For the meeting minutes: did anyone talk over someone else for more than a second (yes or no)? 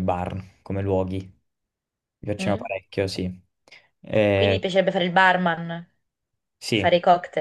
no